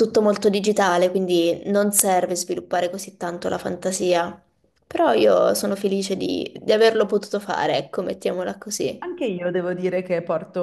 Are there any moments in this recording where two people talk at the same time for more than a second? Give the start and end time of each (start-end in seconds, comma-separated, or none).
none